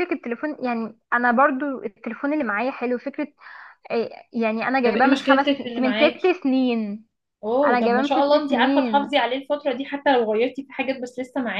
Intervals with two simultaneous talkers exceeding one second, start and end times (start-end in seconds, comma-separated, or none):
4.8-6.3, 7.6-9.1